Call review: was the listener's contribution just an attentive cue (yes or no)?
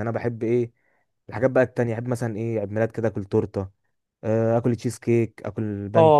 no